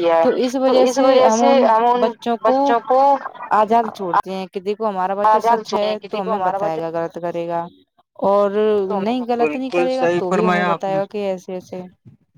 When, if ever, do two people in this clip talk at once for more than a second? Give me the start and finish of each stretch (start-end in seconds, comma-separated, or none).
9.4-11.0